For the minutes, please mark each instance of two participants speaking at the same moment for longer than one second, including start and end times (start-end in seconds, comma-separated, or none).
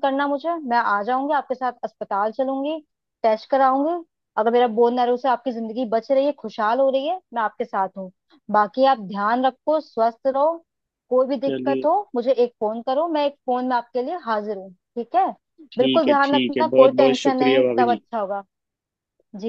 15.8-18.0